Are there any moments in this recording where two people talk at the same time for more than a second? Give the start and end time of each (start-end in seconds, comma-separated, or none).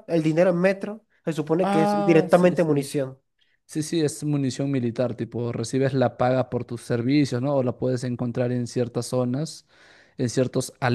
1.6-2.9